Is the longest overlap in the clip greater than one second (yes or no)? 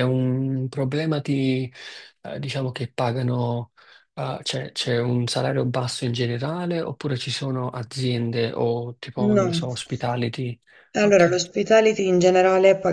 no